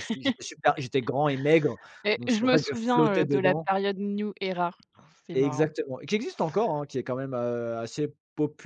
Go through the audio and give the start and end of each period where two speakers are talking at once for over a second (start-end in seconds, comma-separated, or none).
2.1-3.7